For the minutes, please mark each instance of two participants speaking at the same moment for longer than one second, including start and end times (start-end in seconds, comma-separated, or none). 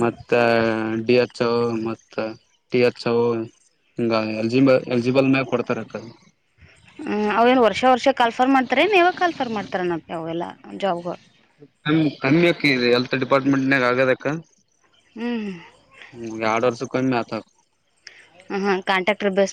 none